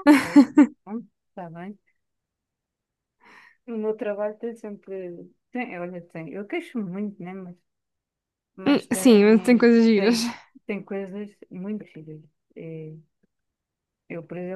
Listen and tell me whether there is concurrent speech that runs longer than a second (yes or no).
yes